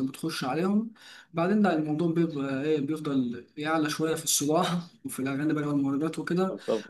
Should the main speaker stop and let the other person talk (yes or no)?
no